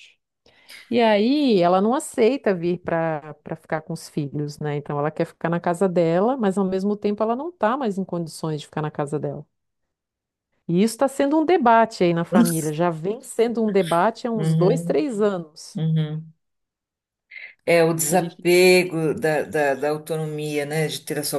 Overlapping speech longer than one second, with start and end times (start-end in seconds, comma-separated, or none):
none